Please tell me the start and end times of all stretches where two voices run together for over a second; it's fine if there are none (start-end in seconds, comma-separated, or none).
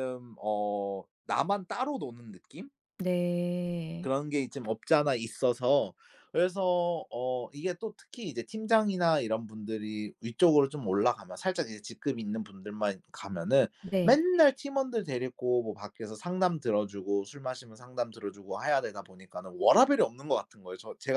none